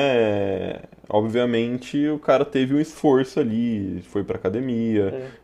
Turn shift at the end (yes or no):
no